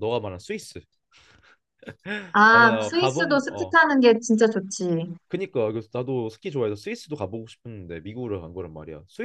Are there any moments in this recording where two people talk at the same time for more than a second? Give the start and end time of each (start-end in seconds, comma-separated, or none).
2.5-3.8